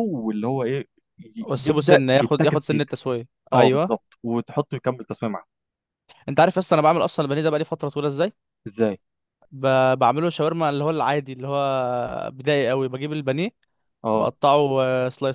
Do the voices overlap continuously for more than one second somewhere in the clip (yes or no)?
yes